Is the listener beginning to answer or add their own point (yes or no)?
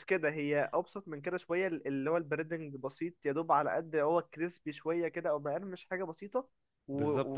yes